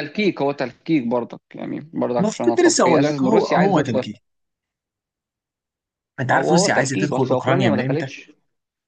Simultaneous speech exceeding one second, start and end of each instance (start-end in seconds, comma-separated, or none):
2.2-4.1, 6.3-8.1